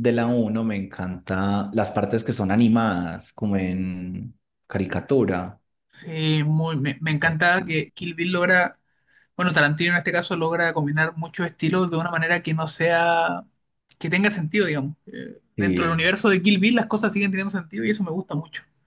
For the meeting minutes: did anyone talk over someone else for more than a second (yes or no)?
no